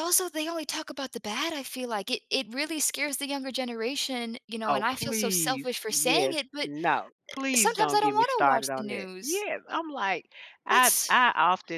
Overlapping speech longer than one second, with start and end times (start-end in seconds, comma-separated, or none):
4.7-6.7, 7.5-9.4